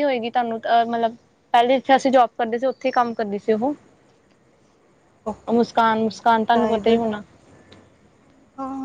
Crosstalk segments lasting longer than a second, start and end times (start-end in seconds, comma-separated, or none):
5.5-6.9